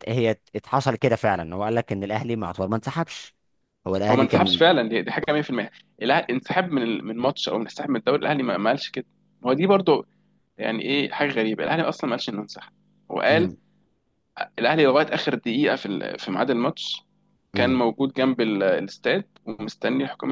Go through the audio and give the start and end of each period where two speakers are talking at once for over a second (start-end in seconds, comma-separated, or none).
none